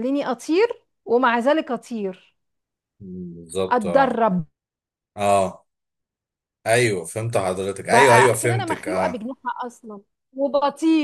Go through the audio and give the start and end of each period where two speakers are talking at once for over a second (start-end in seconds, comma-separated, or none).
7.8-9.2